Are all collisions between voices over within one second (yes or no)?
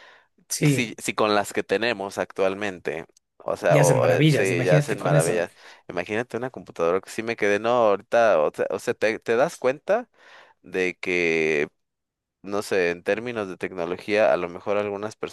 no